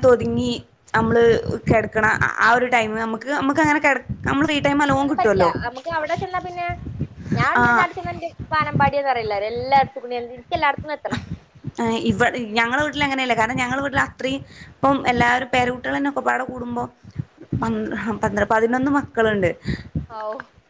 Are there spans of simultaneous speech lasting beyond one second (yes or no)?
no